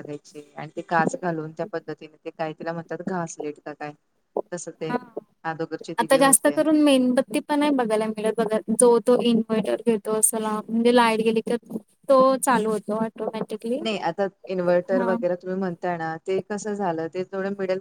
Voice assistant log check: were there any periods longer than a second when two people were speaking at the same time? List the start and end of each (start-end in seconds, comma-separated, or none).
none